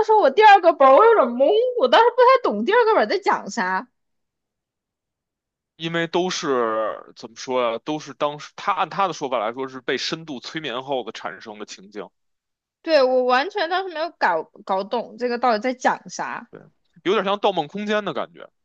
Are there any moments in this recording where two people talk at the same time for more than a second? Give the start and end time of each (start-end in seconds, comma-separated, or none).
none